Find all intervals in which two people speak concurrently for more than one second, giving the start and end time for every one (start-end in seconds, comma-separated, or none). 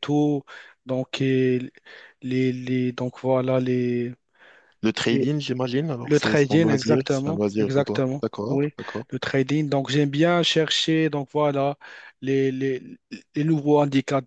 6.1-8.7